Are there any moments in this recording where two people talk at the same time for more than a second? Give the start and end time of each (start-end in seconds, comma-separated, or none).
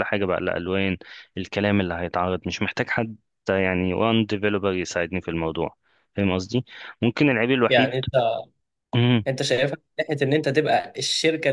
none